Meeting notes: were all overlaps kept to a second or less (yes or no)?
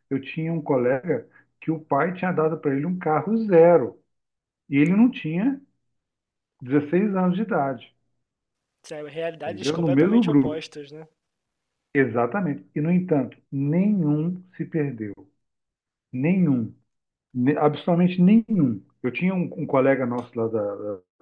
no